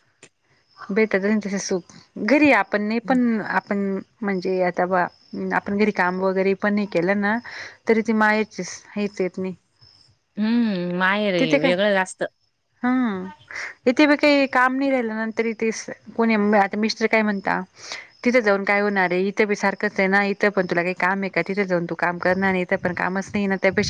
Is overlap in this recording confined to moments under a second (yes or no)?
yes